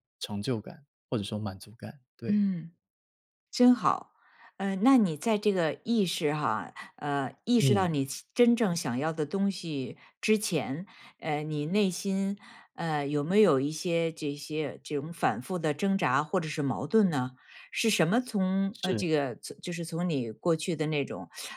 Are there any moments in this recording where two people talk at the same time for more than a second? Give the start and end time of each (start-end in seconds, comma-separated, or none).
none